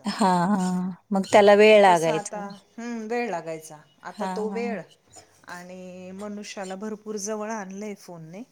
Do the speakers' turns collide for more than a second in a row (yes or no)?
no